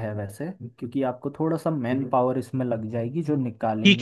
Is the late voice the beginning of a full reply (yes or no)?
yes